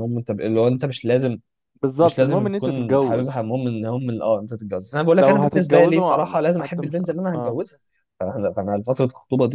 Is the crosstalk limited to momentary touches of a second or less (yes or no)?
no